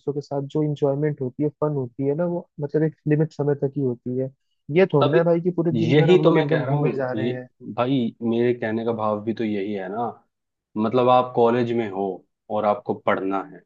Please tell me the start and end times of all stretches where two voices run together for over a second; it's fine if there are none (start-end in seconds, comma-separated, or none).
5.9-7.3